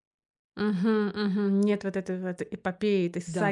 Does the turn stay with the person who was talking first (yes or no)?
no